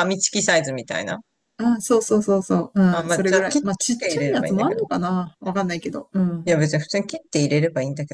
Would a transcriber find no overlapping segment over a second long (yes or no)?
no